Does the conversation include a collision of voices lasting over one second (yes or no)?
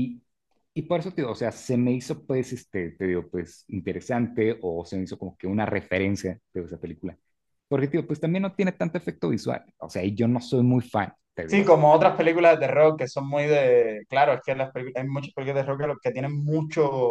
no